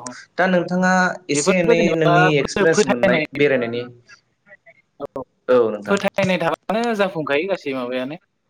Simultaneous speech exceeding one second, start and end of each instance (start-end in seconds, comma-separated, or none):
1.4-3.2